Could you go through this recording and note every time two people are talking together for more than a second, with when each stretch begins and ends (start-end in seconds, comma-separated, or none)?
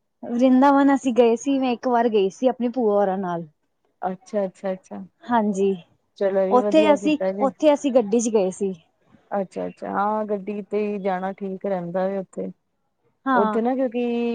none